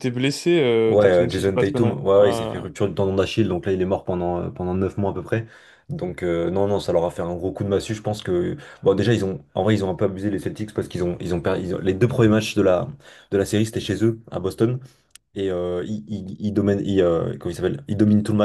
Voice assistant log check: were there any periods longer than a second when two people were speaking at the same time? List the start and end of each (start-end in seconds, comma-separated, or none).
0.8-2.6